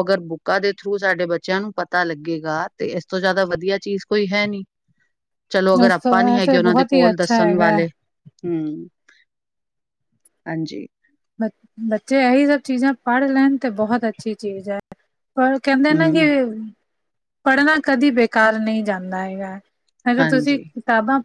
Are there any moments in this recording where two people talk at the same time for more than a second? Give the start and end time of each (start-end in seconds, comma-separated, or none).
5.9-7.8